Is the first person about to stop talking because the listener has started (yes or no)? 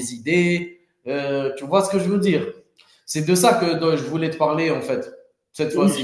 yes